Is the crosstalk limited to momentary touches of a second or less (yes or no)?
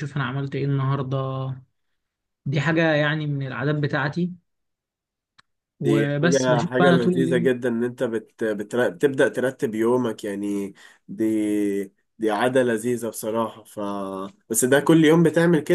no